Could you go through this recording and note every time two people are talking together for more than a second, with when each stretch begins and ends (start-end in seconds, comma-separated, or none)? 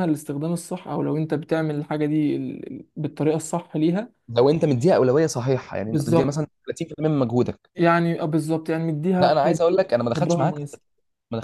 9.2-10.6